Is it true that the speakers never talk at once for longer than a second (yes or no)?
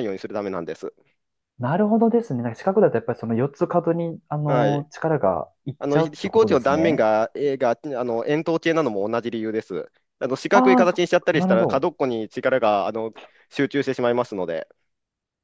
no